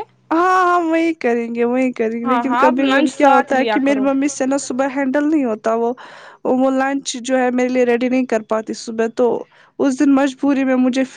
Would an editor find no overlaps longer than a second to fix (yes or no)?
no